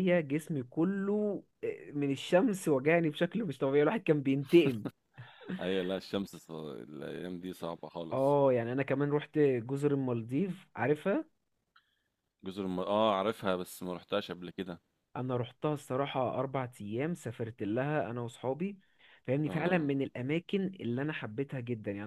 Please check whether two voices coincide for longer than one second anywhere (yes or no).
no